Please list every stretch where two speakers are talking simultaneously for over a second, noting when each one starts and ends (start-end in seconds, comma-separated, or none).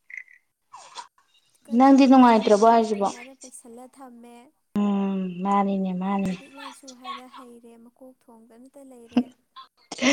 1.8-3.1